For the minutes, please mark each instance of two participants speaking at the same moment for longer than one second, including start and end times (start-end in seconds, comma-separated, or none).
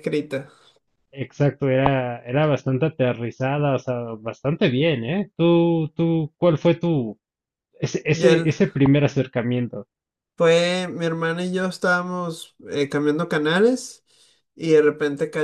none